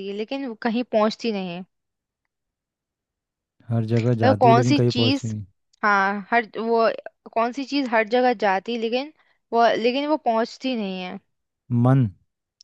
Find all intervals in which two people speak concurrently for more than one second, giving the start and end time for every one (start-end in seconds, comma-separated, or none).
4.0-5.3